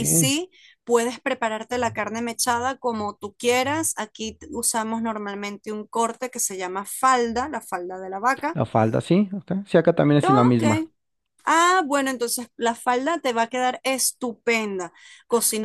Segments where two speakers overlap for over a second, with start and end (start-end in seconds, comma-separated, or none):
none